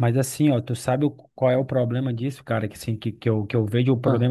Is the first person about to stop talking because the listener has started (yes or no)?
no